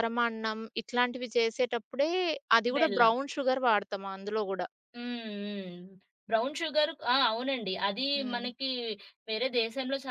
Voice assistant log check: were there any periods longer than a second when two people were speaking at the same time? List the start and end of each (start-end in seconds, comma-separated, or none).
none